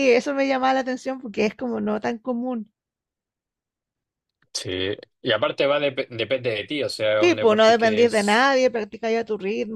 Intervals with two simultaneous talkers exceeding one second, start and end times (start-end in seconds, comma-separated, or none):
7.2-8.5